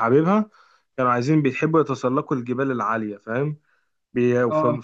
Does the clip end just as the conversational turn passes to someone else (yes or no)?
no